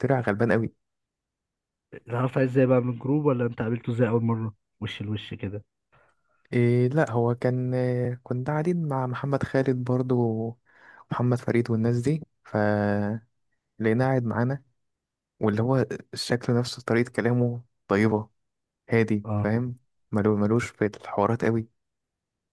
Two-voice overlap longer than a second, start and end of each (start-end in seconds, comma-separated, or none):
none